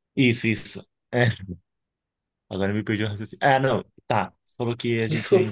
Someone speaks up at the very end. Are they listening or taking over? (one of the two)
listening